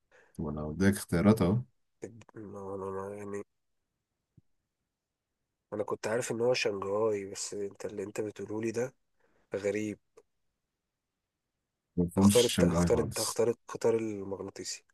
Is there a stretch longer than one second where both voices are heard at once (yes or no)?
yes